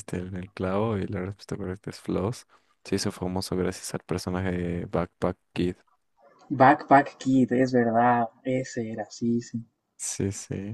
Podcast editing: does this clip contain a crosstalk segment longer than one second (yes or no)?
no